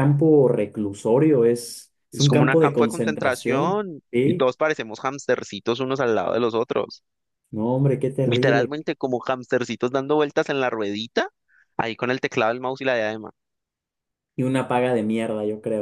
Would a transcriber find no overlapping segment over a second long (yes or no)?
no